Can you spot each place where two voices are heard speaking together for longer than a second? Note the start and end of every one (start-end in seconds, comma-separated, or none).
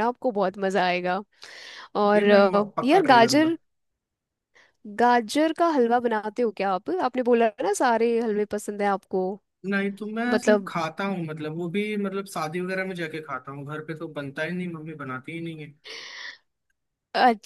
2.2-3.6